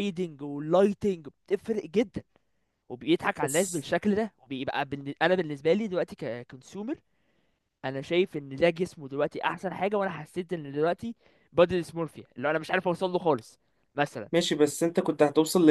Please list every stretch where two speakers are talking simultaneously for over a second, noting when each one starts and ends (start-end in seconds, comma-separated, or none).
none